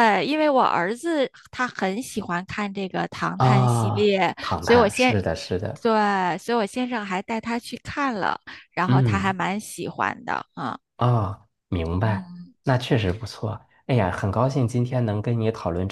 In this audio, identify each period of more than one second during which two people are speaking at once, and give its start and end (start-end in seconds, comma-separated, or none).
3.4-5.1